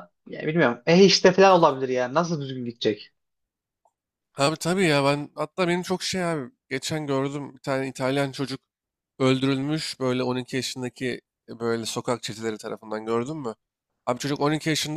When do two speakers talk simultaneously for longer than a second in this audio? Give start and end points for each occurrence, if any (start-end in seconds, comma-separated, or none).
none